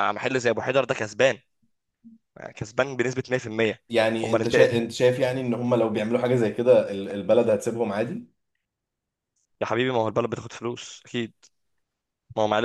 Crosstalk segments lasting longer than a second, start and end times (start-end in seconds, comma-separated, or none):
none